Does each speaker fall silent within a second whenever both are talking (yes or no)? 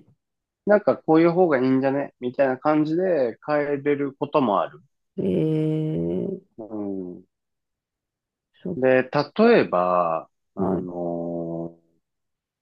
yes